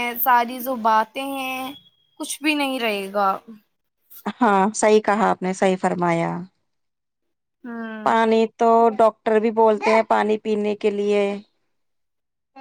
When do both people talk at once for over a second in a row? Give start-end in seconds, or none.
none